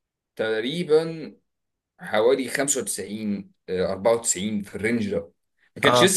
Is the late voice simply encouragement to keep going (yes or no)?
yes